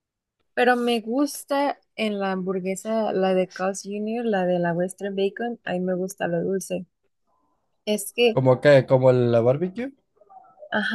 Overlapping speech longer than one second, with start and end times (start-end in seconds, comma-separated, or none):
none